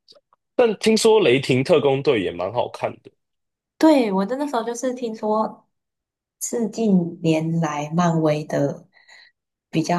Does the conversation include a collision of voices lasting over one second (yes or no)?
no